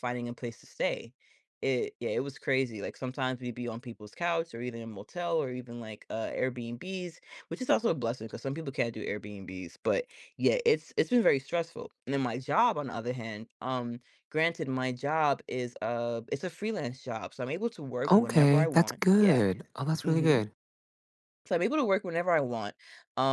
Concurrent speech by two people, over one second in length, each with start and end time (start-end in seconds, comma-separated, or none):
18.1-19.4